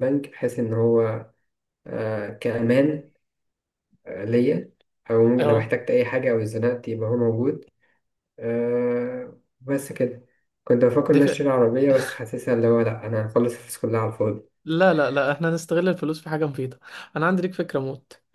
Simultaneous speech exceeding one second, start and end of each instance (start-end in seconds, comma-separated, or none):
none